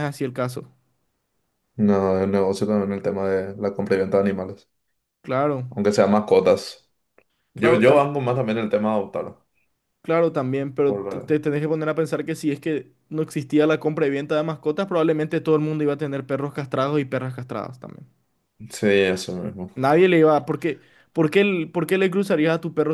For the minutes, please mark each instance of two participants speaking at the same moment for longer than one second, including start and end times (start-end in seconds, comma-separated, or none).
none